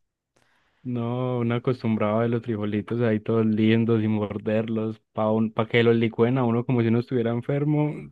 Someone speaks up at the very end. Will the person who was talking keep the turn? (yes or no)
no